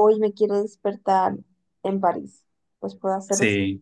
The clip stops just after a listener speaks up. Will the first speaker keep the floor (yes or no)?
yes